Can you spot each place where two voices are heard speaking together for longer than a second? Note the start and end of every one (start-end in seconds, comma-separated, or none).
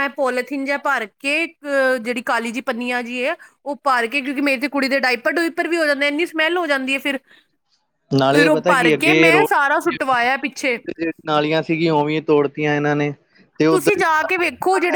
8.3-9.9